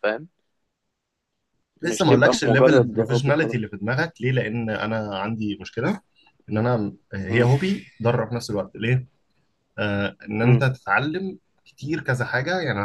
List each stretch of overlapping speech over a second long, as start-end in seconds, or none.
1.8-3.6